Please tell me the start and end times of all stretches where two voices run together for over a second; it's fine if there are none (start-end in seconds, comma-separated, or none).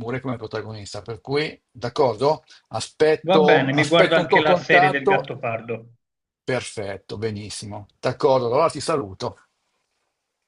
3.3-5.2